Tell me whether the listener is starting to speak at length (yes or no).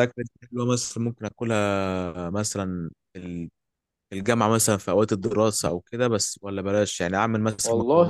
no